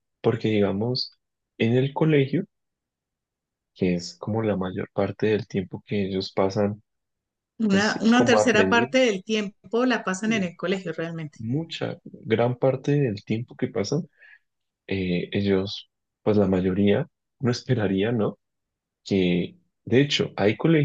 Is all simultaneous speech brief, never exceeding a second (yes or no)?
no